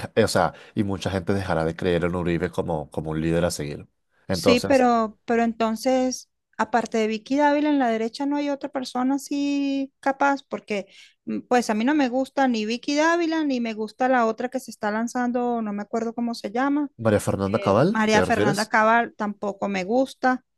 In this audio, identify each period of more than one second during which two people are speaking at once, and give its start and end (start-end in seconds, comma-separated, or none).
17.4-18.7